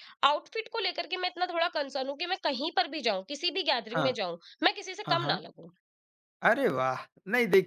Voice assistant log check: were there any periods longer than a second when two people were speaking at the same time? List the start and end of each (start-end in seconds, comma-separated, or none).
none